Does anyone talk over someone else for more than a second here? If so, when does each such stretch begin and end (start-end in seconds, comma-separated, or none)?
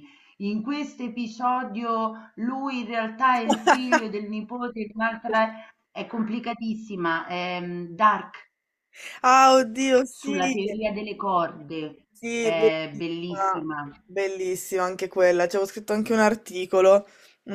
12.1-13.7